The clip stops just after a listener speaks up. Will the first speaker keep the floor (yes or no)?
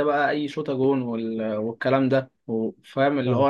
yes